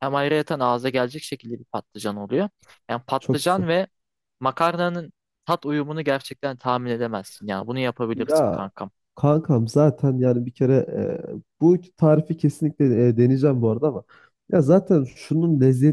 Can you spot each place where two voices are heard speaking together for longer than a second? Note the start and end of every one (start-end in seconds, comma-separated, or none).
none